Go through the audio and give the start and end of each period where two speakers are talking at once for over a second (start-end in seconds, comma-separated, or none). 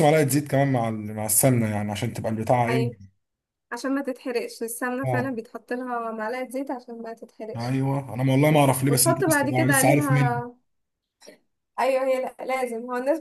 8.5-10.4